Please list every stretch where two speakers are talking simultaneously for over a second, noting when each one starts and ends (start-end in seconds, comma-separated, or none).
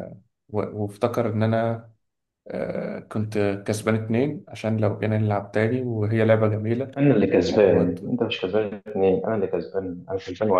none